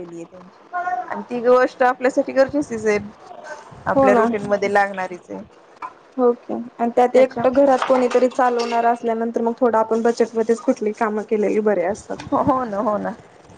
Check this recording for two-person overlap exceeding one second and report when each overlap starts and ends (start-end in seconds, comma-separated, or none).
none